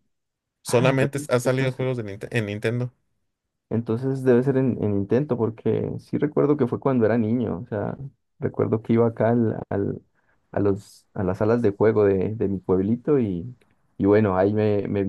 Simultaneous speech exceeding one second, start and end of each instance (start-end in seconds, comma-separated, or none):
0.7-1.9